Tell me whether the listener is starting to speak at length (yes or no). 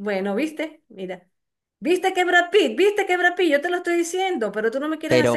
yes